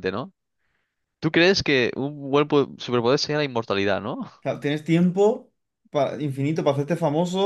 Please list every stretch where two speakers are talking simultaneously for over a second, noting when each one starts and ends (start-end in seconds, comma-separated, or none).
none